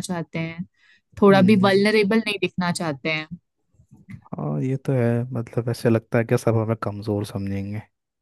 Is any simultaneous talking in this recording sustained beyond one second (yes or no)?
no